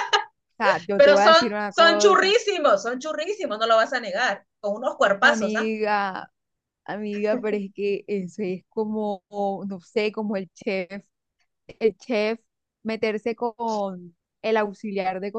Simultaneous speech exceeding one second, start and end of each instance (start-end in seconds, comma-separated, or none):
0.9-2.3